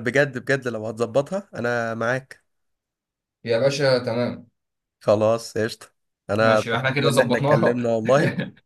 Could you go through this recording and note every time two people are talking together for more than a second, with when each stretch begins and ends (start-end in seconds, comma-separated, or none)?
6.4-7.9